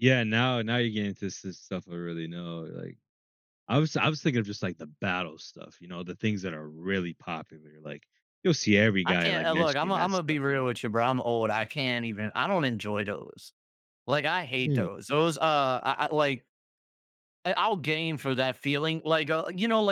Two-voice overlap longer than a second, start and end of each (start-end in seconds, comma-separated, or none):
9.1-10.7